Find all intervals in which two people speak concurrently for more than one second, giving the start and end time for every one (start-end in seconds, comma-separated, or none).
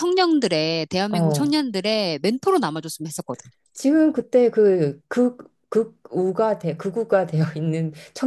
none